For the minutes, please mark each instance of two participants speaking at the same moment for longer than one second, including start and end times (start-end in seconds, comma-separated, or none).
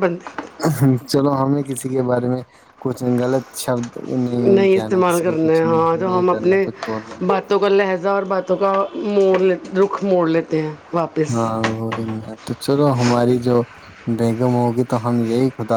4.7-6.6